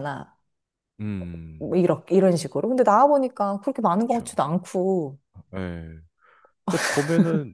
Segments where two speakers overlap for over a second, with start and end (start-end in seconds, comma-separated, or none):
none